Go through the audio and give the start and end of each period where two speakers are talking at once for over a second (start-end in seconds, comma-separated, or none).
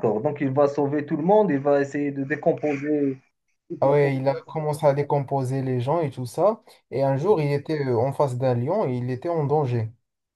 none